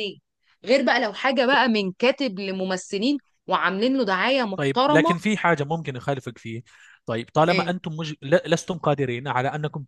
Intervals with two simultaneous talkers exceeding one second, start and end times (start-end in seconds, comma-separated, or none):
none